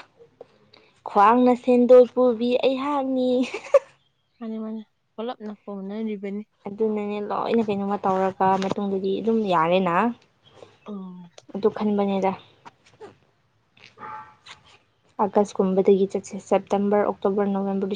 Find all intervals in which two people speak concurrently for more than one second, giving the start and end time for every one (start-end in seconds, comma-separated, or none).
none